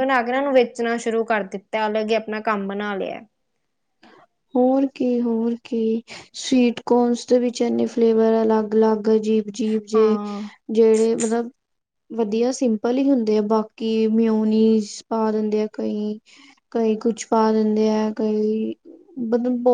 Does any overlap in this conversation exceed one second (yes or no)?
no